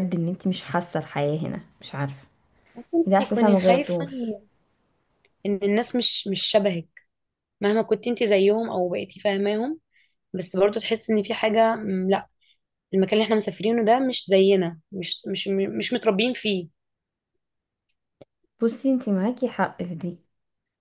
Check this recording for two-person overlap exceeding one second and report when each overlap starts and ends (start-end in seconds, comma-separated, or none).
3.0-4.3